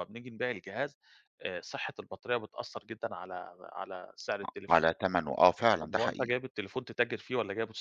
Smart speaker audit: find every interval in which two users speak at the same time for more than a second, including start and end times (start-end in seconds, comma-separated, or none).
none